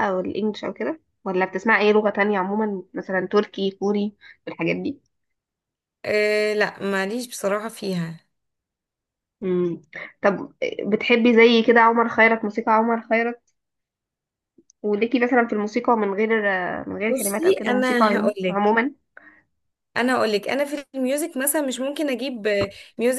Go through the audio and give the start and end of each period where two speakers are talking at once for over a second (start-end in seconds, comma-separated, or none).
17.1-18.6